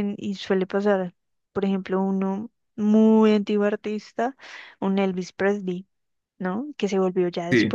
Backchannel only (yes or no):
yes